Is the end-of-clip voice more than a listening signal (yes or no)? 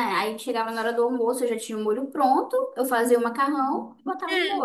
yes